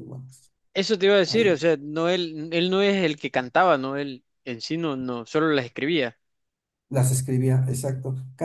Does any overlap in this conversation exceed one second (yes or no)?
no